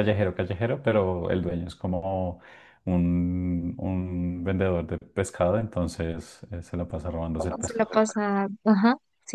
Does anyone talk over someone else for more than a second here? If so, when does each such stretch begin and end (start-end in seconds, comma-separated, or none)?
none